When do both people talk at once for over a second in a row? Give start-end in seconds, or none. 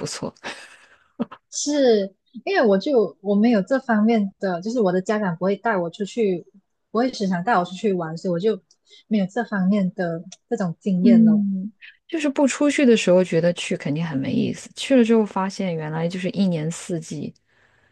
none